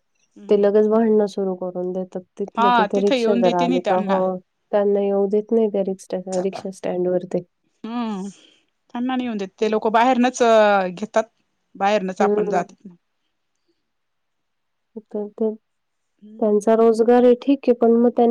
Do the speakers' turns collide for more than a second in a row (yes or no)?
yes